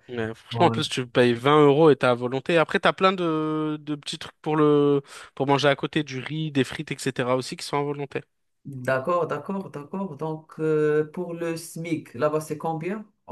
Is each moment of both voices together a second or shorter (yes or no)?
yes